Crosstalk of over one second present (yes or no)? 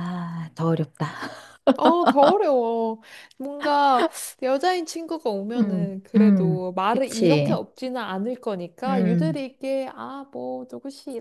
yes